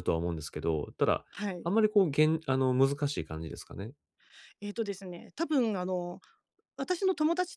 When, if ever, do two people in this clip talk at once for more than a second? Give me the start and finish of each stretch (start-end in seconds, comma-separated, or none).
none